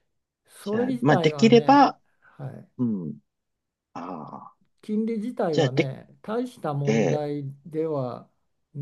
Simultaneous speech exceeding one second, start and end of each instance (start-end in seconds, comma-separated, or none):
0.6-2.0